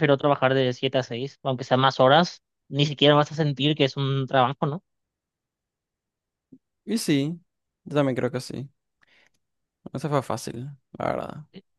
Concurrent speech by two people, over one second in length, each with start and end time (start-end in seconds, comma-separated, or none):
none